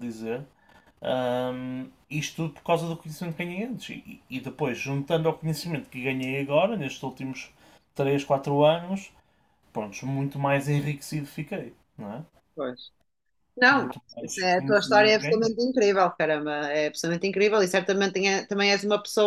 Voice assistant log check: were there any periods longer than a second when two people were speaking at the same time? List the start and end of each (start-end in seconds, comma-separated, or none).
13.7-15.6